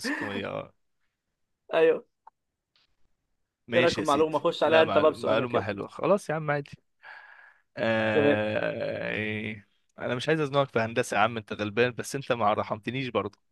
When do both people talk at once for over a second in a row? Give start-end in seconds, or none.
3.7-5.6